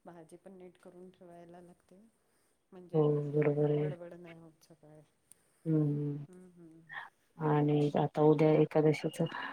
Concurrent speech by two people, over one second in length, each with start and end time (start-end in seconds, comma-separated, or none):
none